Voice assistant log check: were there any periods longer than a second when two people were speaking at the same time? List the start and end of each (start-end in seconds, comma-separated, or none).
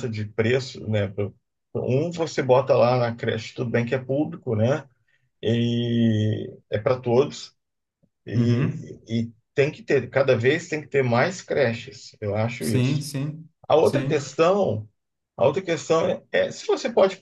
none